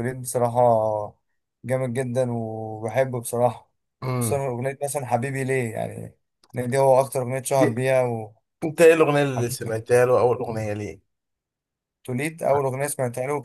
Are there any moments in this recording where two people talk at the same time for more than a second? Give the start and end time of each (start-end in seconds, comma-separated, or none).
none